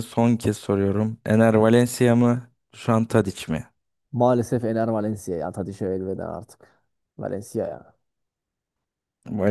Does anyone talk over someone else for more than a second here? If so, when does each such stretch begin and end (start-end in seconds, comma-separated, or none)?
none